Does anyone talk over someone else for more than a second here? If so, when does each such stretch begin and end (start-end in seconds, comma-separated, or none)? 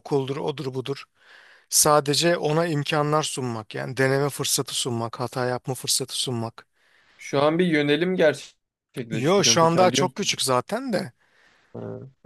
9.1-10.4